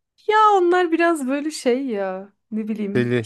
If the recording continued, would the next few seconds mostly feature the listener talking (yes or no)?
no